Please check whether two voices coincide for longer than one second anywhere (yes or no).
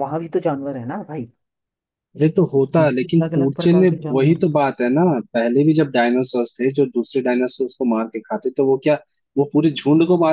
yes